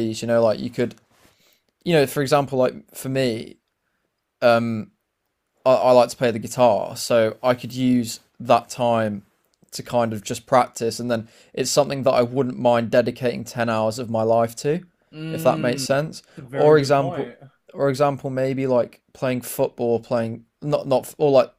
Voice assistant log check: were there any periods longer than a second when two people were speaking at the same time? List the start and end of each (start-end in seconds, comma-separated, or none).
15.3-17.3